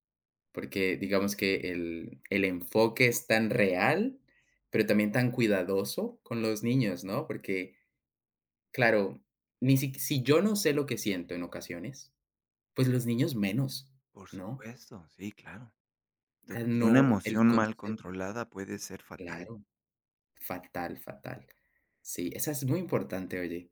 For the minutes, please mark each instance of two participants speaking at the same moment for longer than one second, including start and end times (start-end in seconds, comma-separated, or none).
16.5-18.0